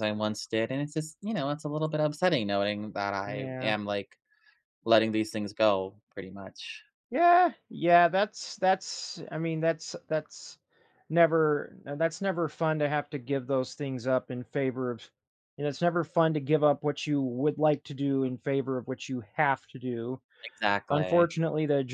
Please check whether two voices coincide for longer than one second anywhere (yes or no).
no